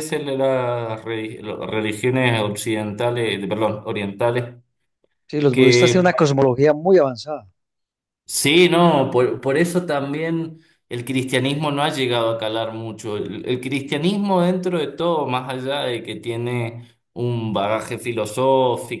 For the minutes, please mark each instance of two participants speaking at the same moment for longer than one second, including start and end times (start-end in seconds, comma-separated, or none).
none